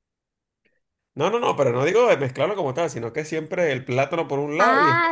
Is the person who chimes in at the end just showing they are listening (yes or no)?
no